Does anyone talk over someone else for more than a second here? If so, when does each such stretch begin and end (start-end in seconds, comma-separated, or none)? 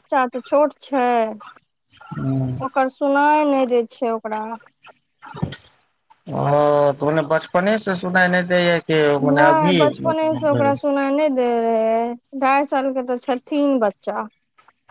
9.2-10.7